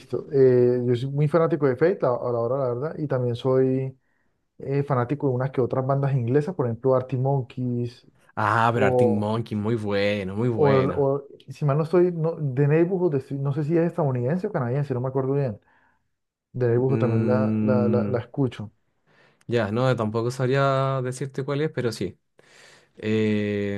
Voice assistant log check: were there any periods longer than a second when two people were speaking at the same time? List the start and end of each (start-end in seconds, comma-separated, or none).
16.9-18.2